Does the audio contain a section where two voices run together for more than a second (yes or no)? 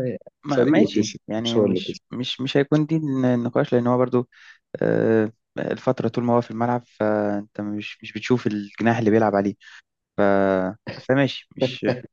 yes